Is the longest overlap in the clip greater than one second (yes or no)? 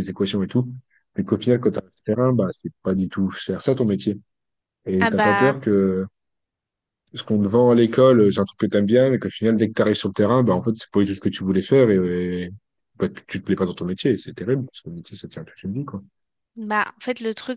no